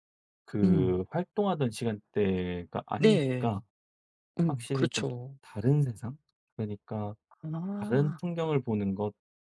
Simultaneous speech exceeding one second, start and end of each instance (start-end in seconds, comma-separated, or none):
none